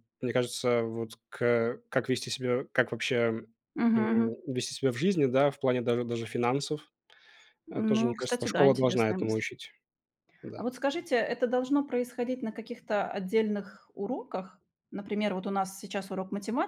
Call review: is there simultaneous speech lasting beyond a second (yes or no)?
yes